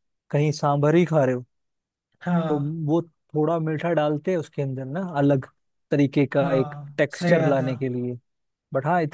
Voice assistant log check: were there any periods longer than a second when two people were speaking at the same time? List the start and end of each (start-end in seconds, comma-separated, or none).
6.3-7.7